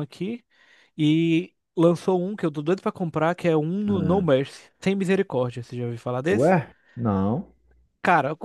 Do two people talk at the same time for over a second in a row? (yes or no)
no